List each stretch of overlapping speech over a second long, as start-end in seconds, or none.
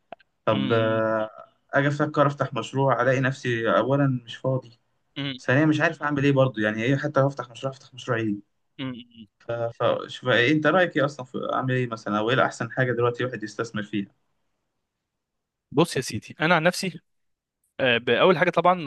none